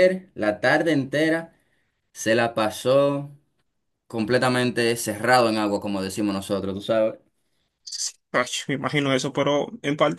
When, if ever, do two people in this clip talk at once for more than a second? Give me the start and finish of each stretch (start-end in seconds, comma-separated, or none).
none